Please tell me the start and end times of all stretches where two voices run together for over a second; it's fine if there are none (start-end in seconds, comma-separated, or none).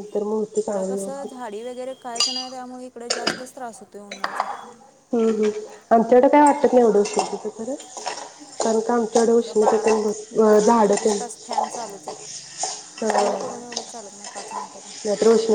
none